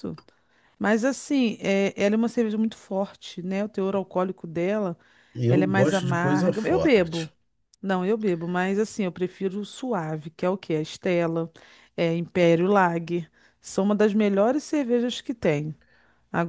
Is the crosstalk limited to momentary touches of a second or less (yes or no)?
no